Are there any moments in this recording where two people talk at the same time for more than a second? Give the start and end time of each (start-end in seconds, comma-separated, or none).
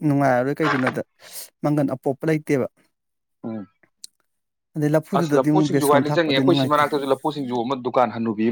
5.2-6.8